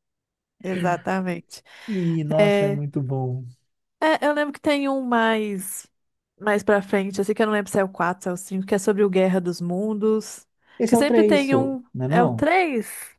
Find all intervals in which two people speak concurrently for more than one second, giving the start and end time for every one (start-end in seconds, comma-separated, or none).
10.9-12.5